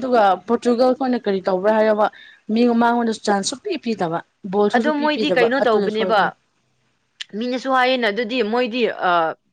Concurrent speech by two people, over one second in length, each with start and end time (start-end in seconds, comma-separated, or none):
4.7-6.2